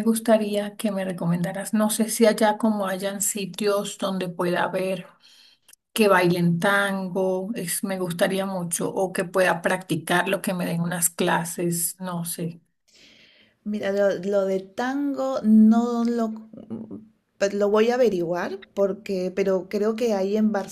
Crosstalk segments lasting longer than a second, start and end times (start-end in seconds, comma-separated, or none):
none